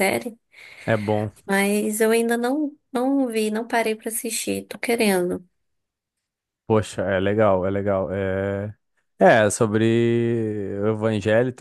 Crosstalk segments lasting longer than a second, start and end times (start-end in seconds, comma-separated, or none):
none